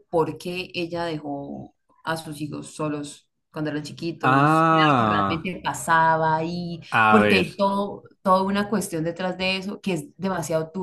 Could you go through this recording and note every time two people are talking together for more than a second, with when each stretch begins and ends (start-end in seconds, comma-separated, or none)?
4.2-5.5